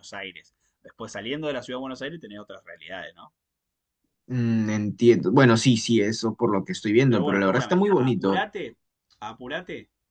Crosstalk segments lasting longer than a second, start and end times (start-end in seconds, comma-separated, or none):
7.1-8.5